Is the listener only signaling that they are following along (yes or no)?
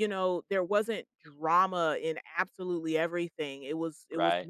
yes